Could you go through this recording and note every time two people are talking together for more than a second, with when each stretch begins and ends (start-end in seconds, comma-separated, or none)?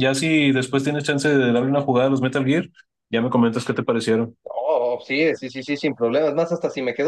none